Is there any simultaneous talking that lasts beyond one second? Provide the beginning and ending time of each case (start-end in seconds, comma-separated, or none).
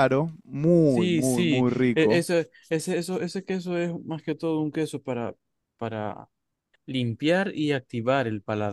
0.9-2.2